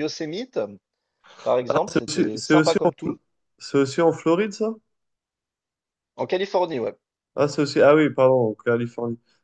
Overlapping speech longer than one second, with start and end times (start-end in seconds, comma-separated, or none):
1.7-3.1